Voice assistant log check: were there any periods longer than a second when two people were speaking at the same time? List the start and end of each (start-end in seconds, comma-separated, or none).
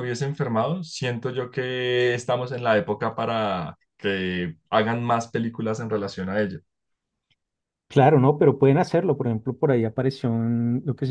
none